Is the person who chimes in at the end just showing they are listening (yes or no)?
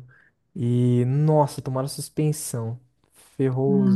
no